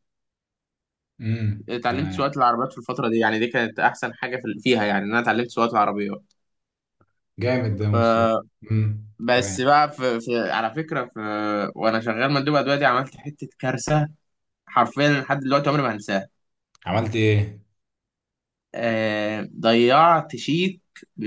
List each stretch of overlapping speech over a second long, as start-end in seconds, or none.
none